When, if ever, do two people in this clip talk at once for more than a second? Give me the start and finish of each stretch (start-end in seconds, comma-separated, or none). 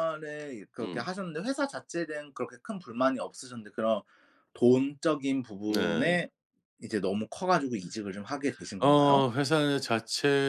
none